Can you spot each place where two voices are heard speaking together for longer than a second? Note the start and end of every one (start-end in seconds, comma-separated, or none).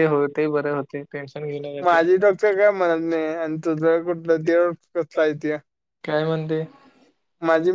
1.8-3.2